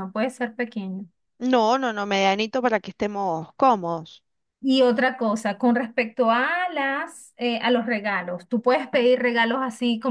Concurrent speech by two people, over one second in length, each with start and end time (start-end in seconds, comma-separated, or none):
none